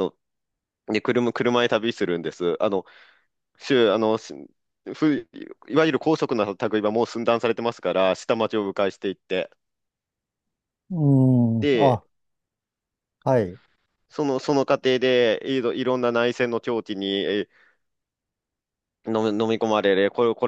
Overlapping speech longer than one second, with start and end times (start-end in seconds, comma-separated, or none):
none